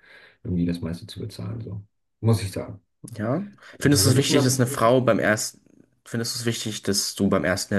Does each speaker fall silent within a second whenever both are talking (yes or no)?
no